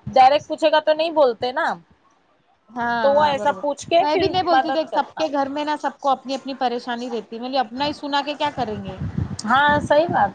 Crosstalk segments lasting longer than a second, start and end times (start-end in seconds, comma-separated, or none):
3.0-5.2